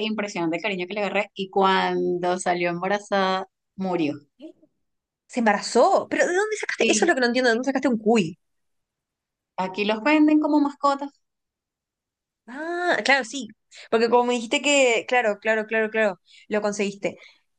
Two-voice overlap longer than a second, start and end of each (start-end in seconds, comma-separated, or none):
none